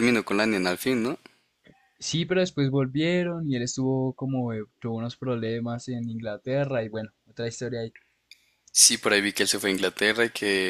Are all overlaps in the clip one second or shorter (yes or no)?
yes